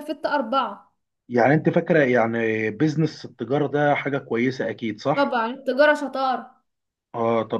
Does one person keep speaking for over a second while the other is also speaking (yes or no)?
no